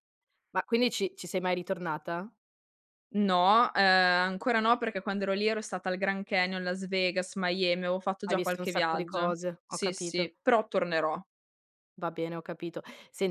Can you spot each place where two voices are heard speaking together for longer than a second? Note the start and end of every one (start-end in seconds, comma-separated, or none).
8.3-10.3